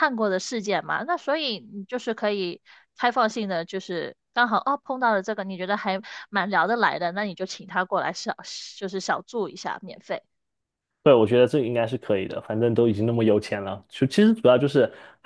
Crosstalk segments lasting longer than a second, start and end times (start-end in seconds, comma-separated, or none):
none